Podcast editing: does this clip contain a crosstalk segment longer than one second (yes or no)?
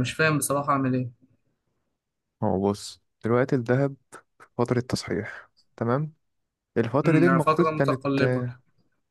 yes